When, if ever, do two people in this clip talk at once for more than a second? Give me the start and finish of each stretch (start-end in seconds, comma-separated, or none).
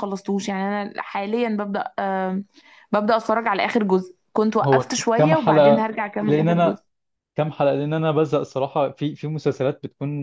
4.6-6.8